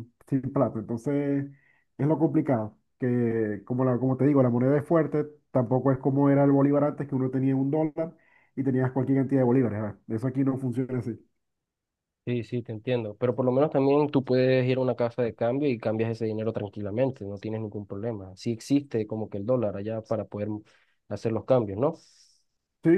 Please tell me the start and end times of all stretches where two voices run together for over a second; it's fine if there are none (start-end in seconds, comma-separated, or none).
none